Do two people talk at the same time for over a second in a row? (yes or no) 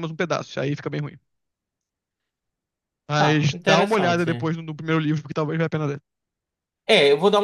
yes